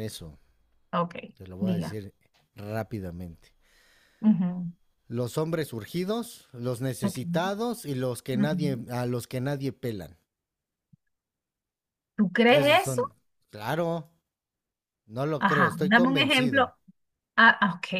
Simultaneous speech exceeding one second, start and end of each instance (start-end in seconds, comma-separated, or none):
15.4-16.7